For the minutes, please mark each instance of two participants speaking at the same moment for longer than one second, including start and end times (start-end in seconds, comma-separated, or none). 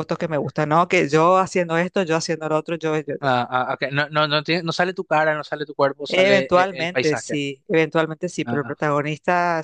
6.1-7.4